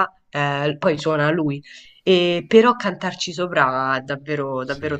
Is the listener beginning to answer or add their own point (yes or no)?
yes